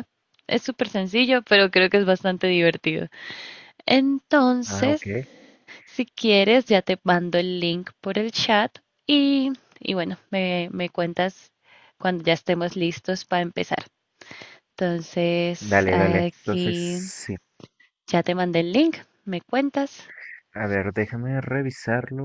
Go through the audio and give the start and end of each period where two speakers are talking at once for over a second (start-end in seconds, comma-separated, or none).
15.6-17.0